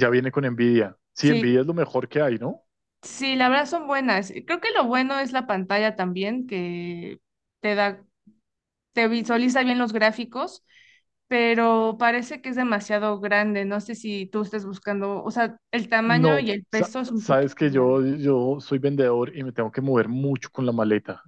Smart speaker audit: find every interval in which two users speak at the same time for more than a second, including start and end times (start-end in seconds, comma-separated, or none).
16.0-18.0